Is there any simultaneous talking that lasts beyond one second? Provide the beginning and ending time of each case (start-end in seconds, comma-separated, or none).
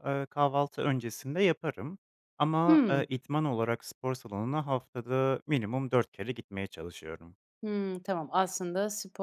none